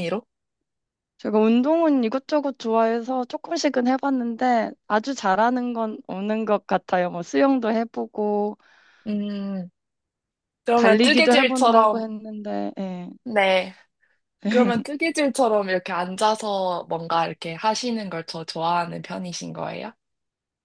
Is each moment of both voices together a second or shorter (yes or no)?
no